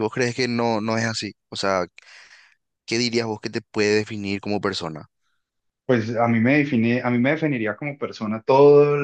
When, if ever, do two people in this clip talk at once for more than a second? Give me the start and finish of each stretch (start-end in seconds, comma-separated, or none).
none